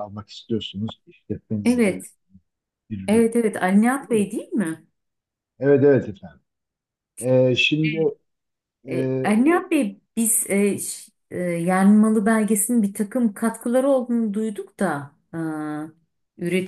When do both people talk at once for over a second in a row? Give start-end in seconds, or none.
none